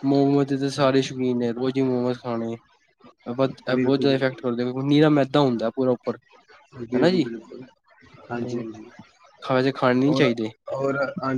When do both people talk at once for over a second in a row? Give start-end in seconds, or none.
none